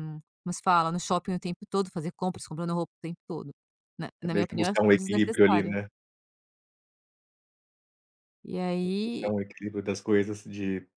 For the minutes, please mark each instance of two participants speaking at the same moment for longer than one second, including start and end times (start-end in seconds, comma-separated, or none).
4.2-5.7